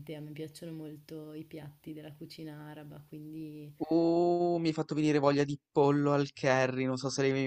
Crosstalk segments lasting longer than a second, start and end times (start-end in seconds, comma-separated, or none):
none